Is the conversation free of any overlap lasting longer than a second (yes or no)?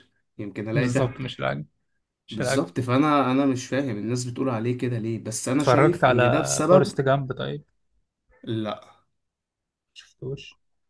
no